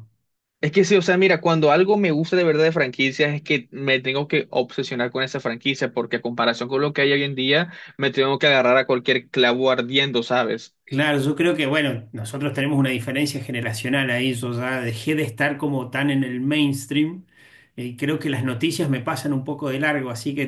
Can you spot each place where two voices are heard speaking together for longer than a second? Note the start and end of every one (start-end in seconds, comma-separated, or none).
none